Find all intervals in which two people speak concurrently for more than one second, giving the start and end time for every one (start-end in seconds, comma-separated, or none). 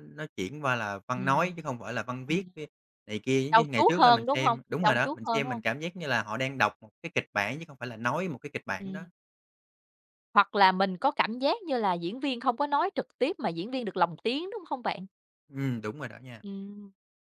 3.5-5.6